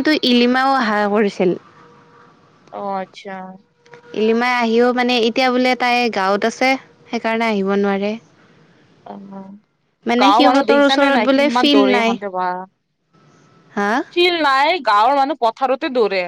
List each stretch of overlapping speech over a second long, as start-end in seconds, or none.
10.2-12.2